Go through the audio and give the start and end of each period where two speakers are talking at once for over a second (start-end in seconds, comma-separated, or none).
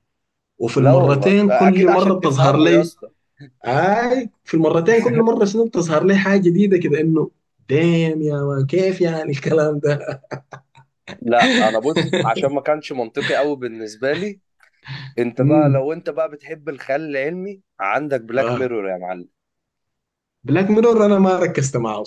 0.8-2.9